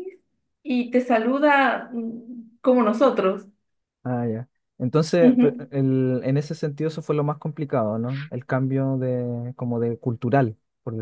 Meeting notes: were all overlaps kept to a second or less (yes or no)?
yes